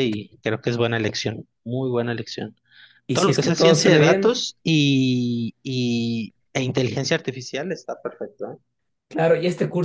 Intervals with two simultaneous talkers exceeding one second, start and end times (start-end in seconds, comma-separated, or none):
3.1-4.3